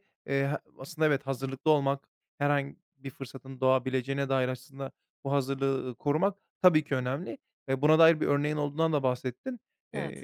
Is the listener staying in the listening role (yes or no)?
yes